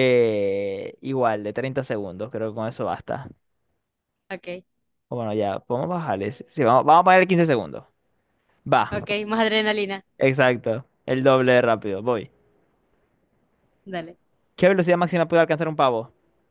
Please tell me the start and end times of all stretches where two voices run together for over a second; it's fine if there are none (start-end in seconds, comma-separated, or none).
none